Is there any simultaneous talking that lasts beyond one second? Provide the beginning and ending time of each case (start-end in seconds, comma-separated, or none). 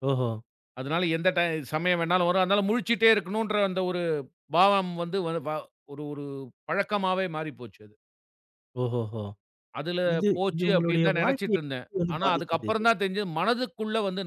10.1-12.8